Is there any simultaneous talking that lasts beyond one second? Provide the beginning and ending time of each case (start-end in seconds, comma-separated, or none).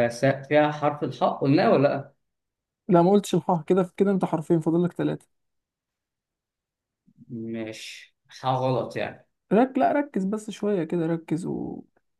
none